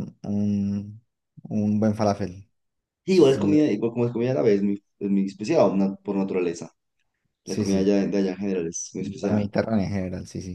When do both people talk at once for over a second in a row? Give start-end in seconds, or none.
none